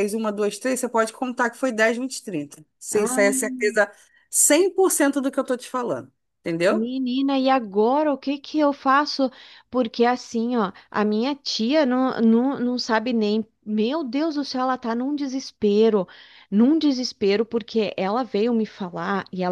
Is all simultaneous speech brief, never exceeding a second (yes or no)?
yes